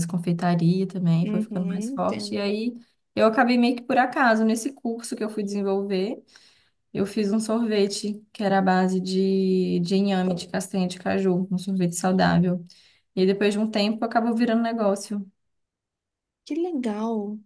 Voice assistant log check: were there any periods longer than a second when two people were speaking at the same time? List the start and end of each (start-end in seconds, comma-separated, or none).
1.2-2.5